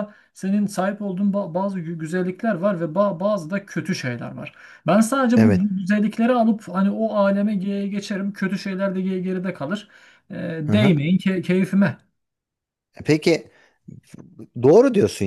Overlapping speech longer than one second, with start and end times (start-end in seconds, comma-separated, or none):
none